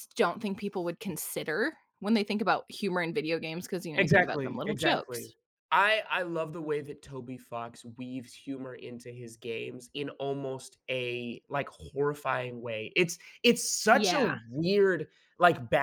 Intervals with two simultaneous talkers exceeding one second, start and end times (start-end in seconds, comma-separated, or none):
4.0-5.3